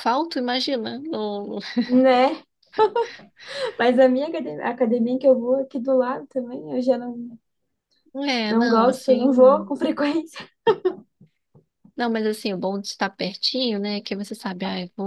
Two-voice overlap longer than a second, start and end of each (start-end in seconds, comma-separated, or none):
8.5-9.7